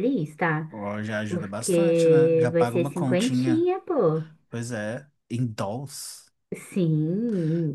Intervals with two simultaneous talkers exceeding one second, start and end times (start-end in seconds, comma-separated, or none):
1.3-3.7